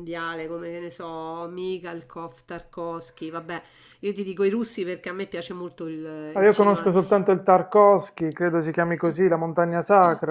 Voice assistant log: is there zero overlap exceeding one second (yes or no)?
yes